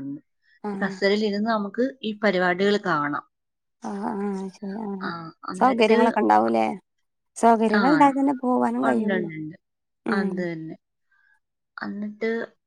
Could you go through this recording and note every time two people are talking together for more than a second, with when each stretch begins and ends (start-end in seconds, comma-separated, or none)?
none